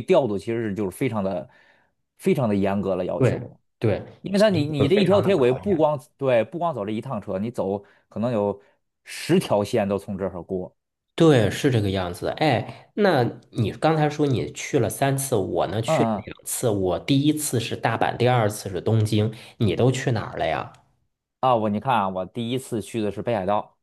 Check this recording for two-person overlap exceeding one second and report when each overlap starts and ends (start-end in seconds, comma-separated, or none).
4.2-5.9